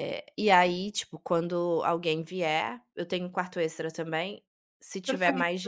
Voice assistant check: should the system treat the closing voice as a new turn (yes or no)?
no